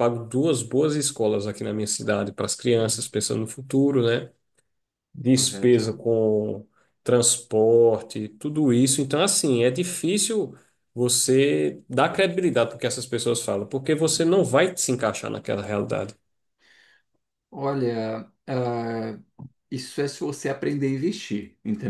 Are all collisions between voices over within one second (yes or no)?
yes